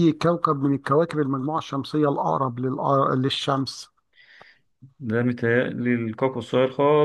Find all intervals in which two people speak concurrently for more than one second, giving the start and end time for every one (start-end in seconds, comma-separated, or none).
none